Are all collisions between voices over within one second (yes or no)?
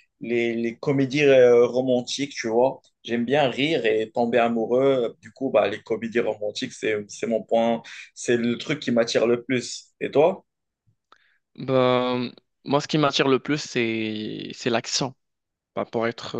yes